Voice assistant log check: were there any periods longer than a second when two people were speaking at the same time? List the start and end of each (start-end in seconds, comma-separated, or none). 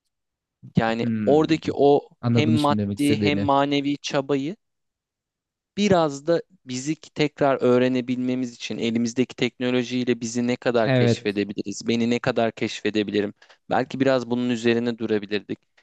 2.2-3.5